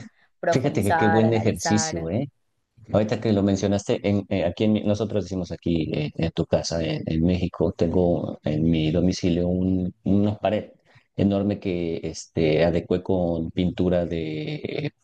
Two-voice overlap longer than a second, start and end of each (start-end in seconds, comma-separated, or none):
0.5-2.1